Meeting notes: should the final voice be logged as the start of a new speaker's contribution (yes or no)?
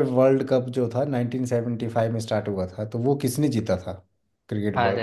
yes